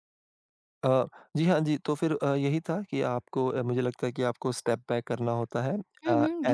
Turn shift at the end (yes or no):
yes